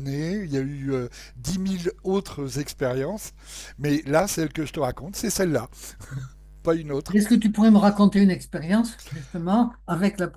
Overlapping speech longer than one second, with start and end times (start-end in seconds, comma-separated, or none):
none